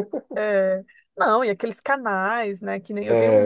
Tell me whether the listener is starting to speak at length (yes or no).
no